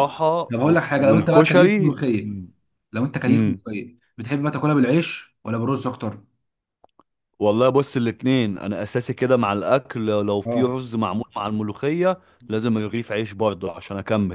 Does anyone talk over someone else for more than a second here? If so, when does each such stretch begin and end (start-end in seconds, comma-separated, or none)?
0.5-2.0